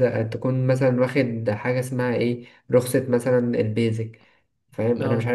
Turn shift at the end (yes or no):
no